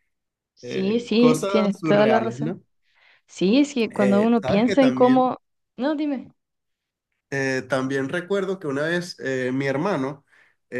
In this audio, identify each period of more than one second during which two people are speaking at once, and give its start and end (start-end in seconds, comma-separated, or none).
0.6-2.6, 3.9-5.3